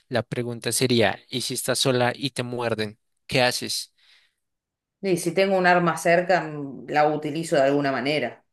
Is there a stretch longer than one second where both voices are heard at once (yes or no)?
no